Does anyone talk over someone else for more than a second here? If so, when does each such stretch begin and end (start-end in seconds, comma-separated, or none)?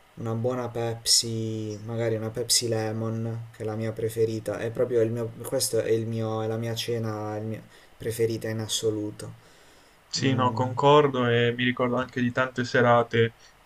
none